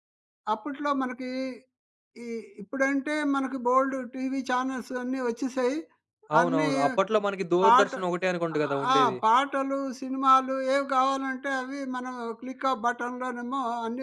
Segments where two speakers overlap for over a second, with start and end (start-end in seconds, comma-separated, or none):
none